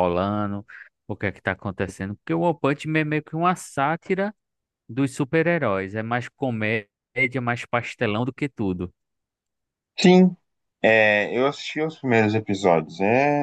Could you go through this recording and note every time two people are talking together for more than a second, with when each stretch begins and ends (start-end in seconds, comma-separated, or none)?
none